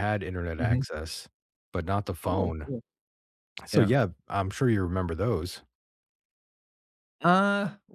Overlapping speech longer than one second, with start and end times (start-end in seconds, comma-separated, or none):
none